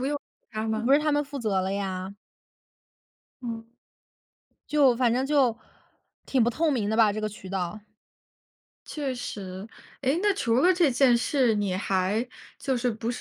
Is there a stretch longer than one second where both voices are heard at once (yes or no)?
no